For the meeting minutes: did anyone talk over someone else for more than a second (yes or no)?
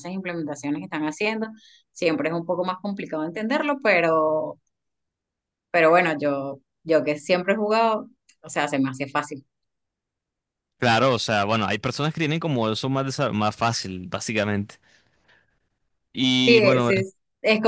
no